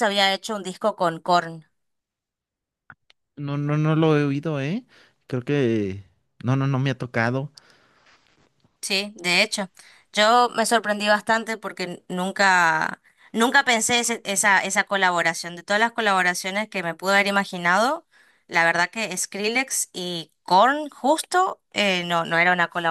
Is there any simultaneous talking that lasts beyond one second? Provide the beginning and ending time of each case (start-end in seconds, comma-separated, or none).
none